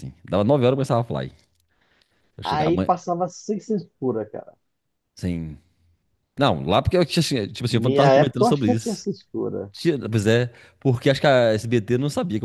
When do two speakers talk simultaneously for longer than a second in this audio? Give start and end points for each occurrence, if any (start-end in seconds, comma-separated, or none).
7.6-9.0